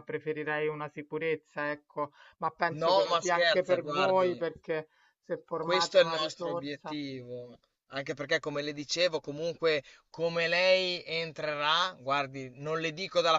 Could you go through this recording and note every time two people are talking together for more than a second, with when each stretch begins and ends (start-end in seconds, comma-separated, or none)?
2.8-4.5, 5.6-7.0